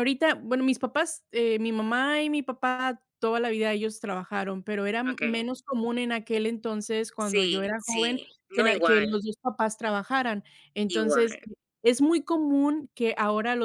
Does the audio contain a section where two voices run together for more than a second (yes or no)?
yes